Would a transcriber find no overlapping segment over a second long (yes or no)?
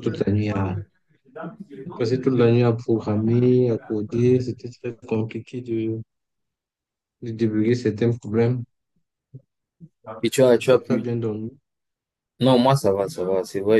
yes